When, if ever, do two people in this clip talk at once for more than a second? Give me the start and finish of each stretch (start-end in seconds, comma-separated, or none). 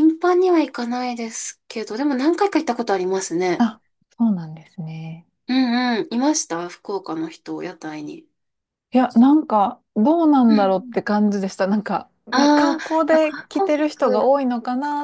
12.3-14.4